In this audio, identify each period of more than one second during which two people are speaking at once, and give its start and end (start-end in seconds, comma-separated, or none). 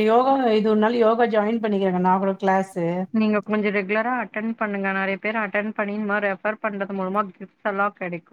none